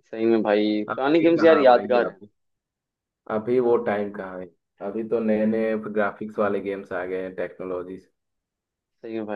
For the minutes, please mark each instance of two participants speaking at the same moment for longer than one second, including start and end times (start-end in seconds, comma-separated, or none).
0.9-2.2